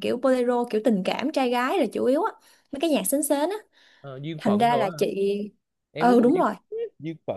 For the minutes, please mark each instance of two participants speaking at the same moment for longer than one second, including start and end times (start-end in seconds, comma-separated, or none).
none